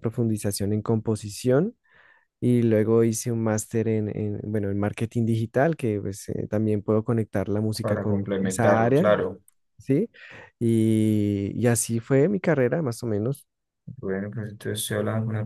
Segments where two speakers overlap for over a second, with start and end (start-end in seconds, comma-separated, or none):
7.8-9.1